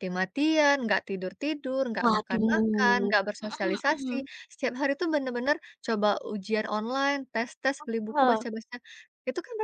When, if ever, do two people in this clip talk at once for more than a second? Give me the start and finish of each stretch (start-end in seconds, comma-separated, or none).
2.0-4.1